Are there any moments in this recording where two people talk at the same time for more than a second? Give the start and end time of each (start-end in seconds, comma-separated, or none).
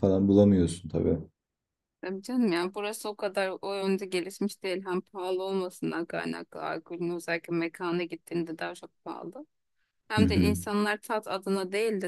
none